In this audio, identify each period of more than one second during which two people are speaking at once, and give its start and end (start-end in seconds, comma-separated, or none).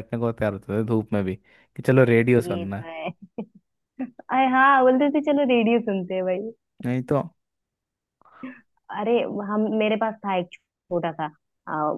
none